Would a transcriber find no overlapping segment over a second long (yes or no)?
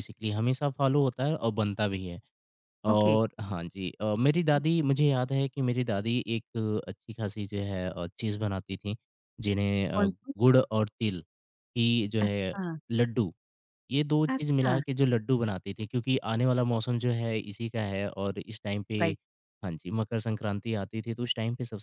yes